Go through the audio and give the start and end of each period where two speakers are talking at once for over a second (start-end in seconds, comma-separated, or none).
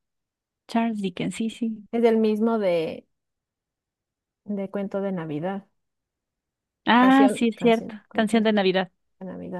7.0-8.5